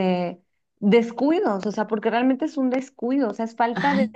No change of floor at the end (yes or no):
no